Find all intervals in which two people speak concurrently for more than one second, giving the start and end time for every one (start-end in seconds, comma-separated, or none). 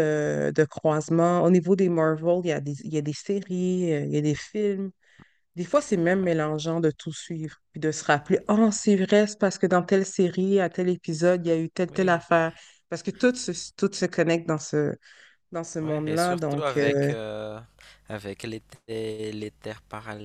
15.8-17.1